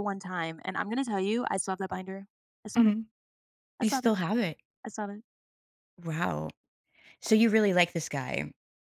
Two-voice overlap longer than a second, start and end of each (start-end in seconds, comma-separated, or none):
none